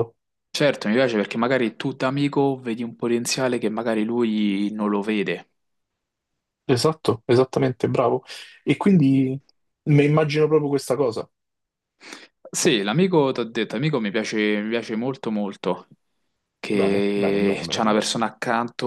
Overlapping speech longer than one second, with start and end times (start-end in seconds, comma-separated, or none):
16.7-18.0